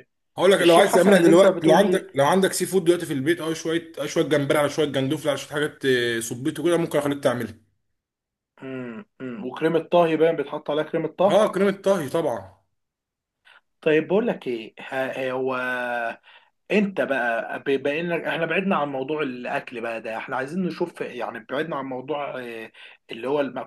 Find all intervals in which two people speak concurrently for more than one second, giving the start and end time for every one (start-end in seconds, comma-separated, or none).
0.6-2.1